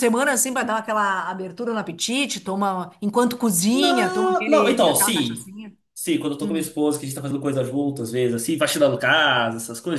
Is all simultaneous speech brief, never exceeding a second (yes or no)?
no